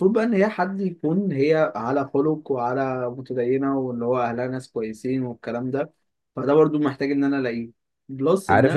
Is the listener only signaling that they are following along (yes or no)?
no